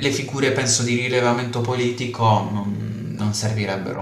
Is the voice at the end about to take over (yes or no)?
yes